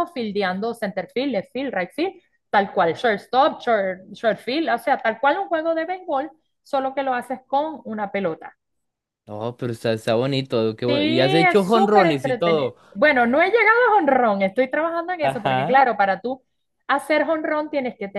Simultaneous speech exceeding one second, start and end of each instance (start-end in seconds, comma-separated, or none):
10.9-12.8